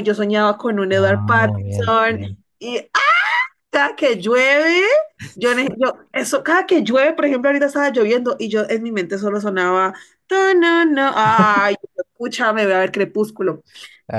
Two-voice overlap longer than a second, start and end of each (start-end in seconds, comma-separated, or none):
0.9-2.4